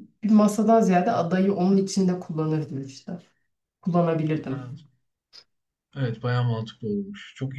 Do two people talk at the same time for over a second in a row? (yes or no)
no